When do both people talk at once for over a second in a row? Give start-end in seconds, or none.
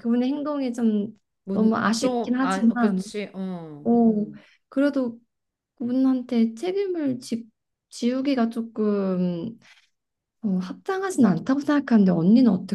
1.4-3.0